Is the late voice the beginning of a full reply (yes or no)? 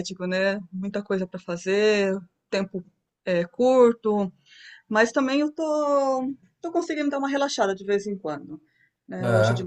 no